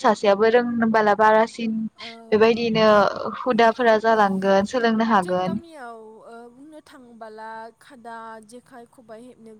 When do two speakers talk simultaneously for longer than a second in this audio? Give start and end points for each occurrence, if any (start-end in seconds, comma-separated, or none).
none